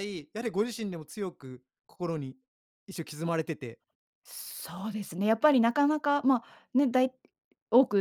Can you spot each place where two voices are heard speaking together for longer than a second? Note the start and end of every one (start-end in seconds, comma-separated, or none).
none